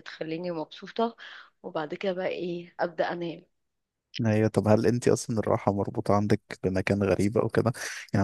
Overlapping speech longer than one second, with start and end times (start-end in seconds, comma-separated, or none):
none